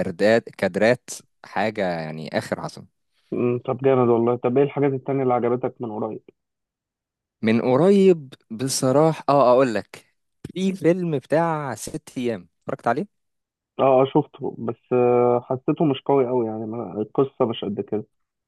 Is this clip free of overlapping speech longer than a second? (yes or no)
yes